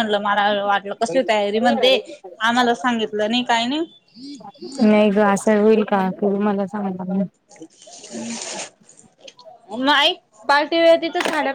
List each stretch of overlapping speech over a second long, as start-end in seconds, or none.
none